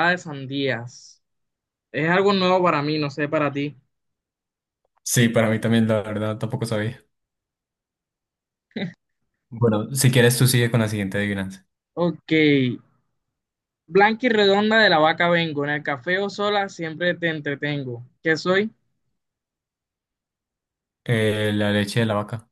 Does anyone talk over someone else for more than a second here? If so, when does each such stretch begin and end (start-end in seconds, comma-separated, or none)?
none